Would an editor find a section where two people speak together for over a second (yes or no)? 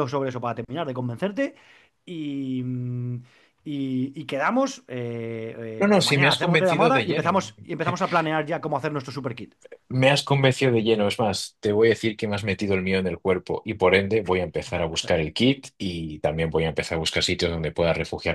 yes